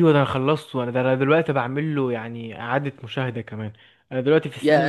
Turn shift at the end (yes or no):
no